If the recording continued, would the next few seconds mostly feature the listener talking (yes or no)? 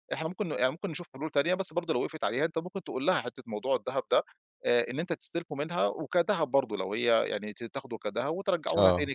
no